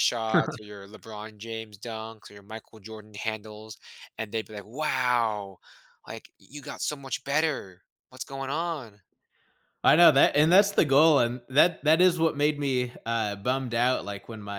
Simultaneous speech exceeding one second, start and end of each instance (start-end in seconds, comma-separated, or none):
none